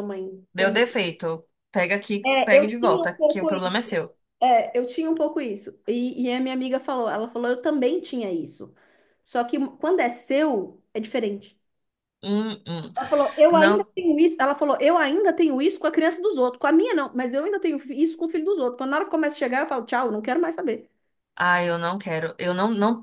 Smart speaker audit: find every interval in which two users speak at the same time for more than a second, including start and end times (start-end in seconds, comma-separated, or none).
2.2-3.9